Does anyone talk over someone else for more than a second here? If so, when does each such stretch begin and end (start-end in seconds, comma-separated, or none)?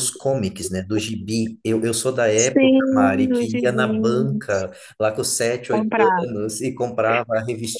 2.4-4.6